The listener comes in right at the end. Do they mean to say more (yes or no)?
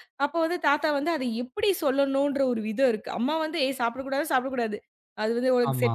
no